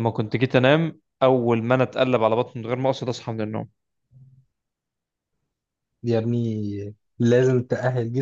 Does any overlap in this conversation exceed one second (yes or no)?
no